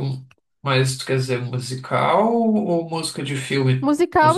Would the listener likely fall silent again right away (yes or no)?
no